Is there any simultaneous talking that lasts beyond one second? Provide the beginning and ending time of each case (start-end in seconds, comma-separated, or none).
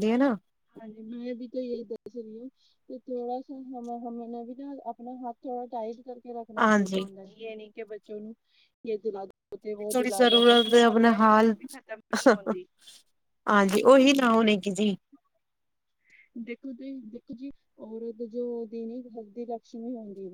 9.9-11.6